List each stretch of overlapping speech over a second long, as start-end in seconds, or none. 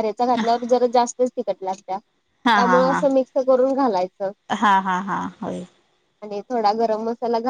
none